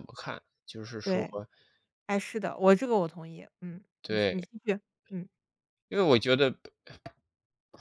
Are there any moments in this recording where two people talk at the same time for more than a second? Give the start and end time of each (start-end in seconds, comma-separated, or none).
none